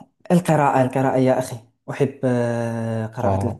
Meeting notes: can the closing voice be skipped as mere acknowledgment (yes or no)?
yes